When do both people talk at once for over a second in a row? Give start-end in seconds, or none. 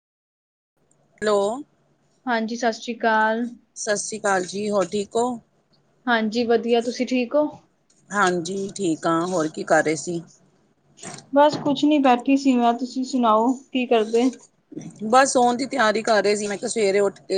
none